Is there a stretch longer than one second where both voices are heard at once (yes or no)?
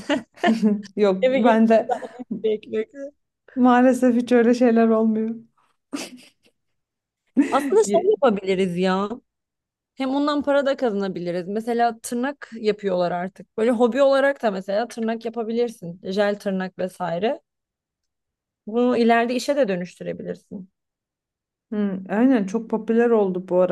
no